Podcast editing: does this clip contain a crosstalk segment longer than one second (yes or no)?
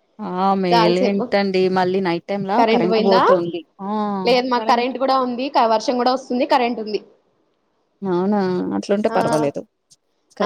no